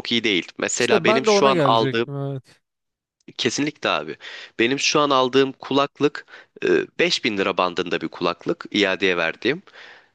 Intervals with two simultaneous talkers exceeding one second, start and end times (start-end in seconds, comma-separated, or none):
0.8-2.1